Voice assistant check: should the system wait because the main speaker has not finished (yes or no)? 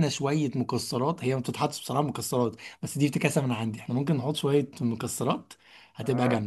no